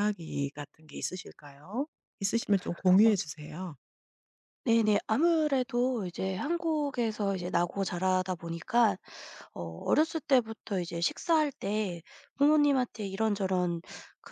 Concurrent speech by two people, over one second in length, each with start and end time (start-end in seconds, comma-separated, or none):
none